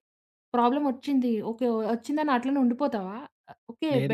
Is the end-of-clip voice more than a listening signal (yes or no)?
no